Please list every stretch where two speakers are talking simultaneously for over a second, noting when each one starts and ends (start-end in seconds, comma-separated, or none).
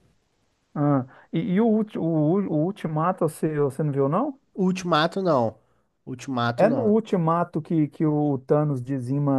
none